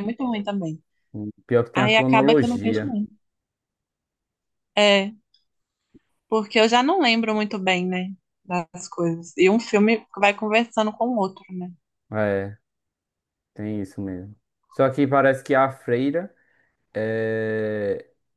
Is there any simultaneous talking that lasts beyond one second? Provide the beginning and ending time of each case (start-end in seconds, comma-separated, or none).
1.7-3.0